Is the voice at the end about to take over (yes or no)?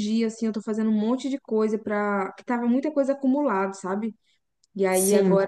no